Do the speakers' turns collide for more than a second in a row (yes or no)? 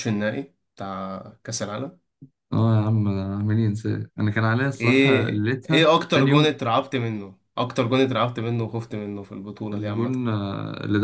yes